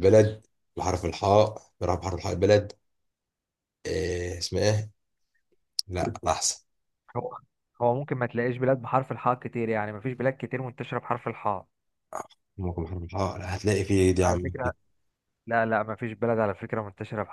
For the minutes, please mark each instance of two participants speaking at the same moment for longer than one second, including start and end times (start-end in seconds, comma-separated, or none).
none